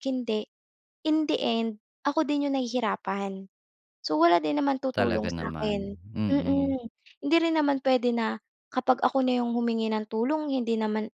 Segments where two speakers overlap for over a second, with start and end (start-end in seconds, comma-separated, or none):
4.9-6.7